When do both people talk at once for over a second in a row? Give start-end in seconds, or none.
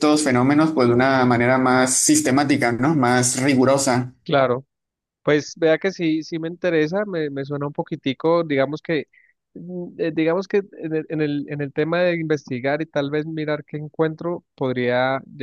none